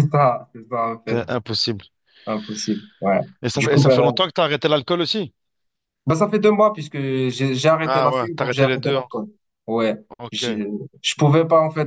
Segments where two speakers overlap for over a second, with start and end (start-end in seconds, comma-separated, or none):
7.8-9.1